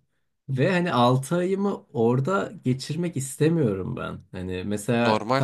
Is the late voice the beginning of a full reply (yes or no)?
no